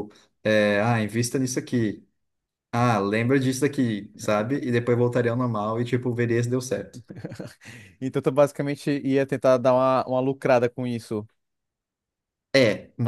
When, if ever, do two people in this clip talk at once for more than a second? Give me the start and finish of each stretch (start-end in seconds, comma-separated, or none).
none